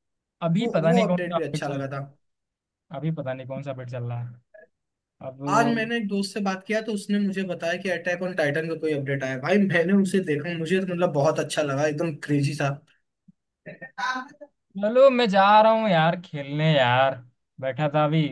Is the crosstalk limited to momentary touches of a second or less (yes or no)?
no